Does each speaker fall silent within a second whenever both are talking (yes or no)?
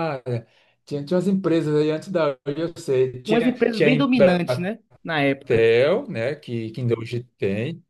no